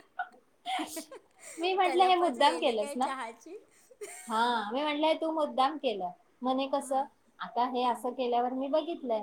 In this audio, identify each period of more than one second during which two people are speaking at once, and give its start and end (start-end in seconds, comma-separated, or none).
1.8-3.1